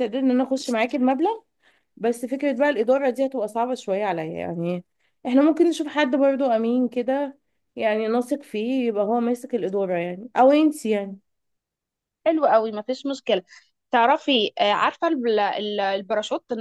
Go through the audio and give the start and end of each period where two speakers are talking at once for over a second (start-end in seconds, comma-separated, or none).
none